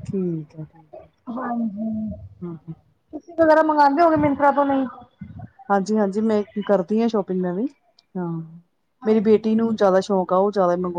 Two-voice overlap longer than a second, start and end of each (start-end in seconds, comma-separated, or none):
none